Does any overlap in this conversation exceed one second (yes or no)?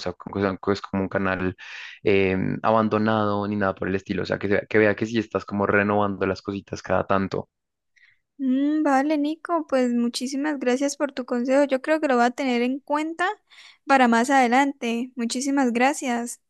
no